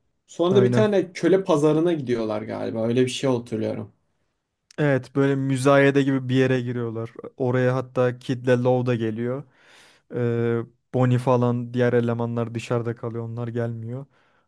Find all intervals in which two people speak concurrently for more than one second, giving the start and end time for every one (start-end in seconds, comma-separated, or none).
none